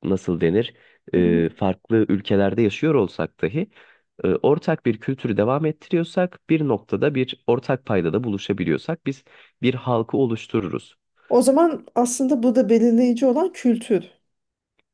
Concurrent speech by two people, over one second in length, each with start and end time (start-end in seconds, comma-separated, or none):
none